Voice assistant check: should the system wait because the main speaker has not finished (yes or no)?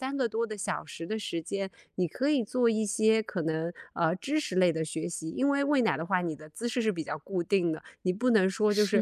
yes